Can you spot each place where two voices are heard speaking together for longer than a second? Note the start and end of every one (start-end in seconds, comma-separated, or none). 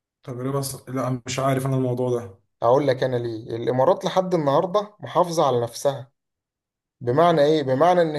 none